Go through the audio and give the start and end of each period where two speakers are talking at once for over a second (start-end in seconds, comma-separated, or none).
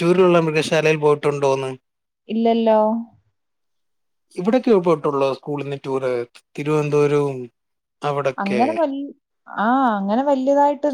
none